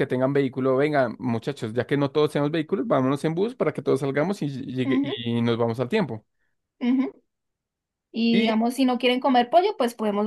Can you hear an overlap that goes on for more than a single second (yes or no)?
no